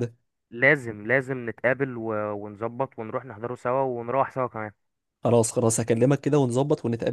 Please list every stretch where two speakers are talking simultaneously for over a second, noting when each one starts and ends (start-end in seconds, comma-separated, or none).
none